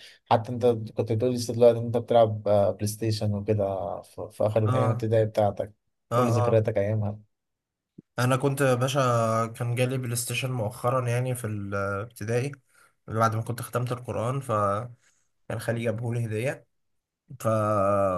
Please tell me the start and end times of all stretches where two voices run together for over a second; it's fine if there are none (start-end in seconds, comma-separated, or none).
none